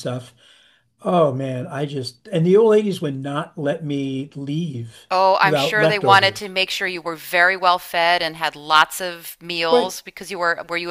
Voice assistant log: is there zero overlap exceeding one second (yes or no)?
no